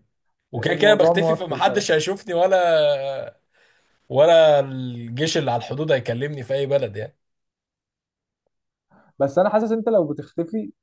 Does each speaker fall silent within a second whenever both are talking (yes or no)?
no